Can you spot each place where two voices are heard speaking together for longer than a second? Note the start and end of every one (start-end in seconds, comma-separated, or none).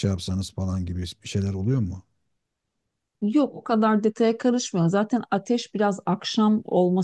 none